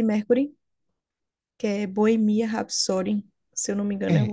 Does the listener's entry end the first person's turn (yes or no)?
yes